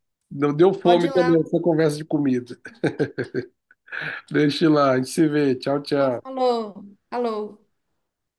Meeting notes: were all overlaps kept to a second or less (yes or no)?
yes